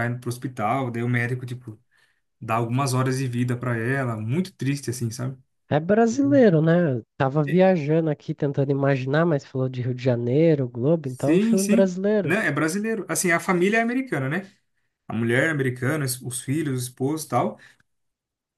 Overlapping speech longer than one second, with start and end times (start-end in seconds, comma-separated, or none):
11.0-12.3